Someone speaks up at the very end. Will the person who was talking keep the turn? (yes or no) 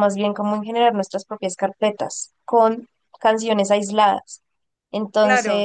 yes